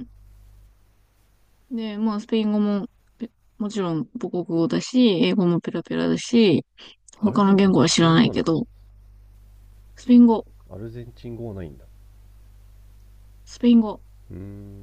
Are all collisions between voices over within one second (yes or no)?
no